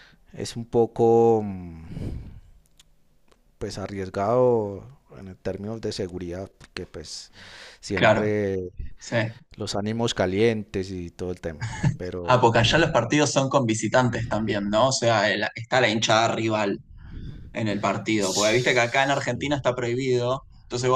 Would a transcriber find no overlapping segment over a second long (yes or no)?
no